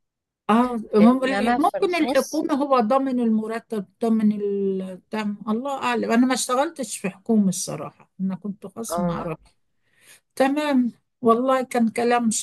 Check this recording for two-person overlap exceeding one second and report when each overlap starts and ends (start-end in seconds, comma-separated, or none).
1.0-2.5